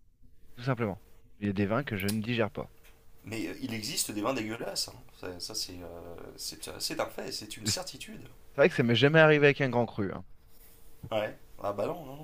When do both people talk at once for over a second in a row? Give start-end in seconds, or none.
none